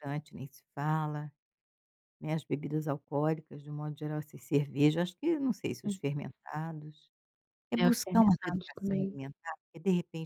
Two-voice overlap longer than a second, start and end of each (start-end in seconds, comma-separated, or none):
7.8-9.2